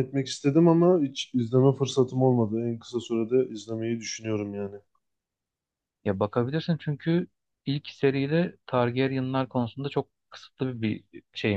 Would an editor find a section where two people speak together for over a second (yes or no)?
no